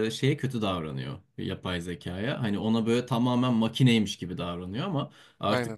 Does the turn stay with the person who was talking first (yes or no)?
yes